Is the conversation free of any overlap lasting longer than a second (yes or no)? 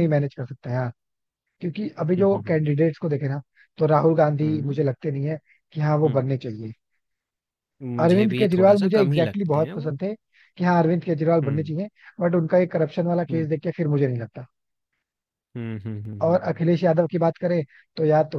no